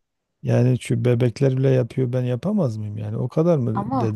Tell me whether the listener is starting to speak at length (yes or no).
no